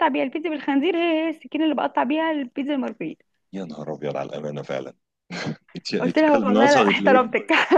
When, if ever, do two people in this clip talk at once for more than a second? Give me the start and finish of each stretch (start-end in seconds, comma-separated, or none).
6.0-7.3